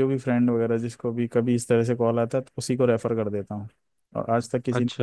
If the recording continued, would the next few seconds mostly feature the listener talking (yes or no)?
no